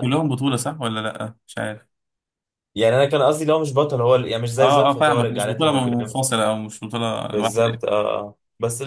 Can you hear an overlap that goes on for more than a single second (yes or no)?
yes